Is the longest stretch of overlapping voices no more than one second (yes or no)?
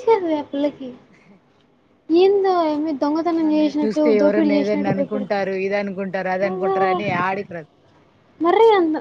no